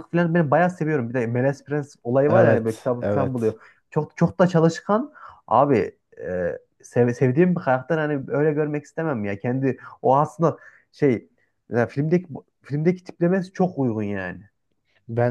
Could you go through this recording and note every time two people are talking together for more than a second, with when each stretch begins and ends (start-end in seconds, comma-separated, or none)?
2.3-3.6